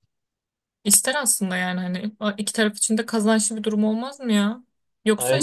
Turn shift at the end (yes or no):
no